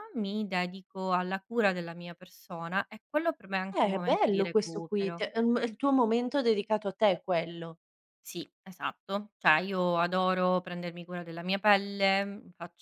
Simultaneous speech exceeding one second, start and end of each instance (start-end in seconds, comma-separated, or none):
3.7-5.2